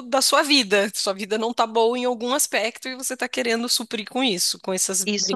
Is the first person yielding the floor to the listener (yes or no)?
yes